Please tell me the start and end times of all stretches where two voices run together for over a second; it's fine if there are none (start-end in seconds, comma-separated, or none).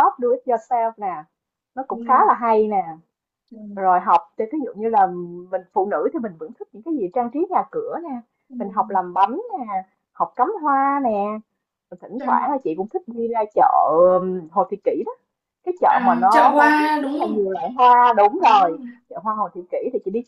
15.9-17.5